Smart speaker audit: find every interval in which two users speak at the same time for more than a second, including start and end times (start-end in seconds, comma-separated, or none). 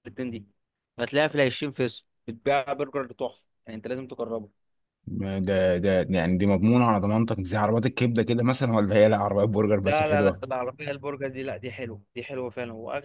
none